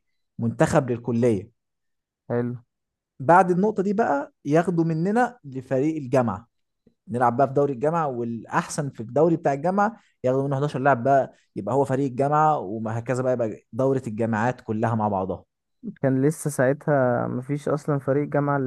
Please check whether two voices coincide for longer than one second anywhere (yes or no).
no